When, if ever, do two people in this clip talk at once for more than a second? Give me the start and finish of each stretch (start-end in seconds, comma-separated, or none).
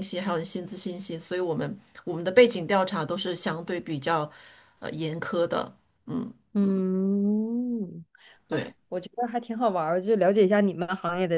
none